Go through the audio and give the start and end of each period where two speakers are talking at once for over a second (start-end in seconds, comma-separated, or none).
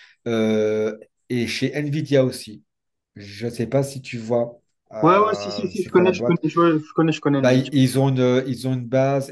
5.0-6.4